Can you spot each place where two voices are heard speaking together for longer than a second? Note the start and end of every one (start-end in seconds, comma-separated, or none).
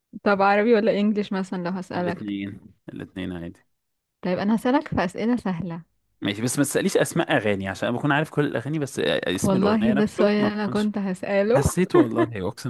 9.4-10.9